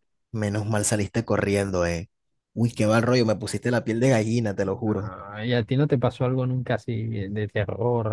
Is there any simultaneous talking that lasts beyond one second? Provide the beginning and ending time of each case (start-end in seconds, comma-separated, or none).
none